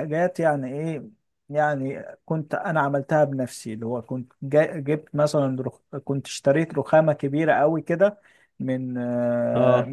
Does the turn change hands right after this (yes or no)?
no